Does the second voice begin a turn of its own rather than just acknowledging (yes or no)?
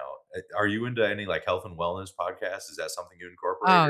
yes